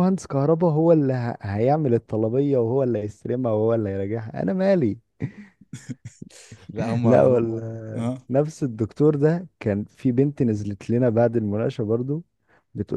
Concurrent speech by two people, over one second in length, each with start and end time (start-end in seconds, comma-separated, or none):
7.0-8.3